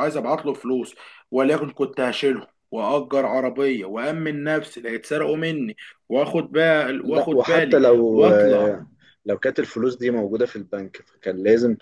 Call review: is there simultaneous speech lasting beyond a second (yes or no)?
yes